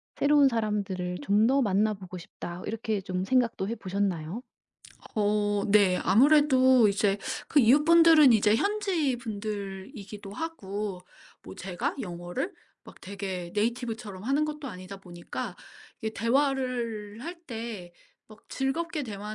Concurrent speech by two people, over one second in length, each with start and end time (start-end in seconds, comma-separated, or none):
none